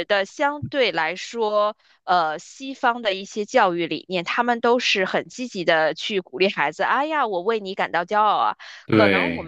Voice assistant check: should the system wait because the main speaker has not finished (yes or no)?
yes